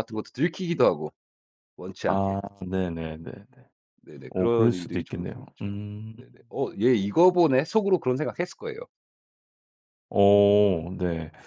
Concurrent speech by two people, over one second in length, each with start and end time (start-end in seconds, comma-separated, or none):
4.3-6.2